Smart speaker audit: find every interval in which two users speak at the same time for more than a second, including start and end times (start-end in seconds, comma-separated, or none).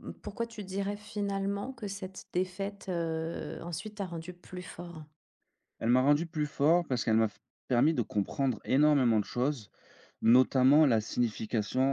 none